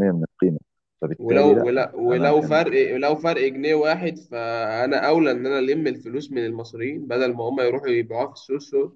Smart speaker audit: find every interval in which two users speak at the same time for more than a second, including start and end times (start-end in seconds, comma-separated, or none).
1.2-2.6